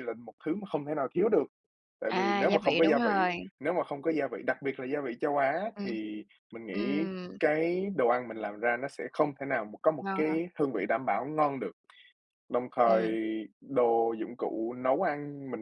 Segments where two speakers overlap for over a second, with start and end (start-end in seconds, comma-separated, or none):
2.1-3.3